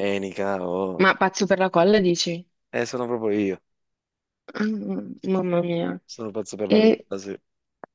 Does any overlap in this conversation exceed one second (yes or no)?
no